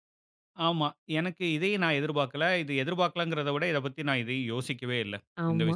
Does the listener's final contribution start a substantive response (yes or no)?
yes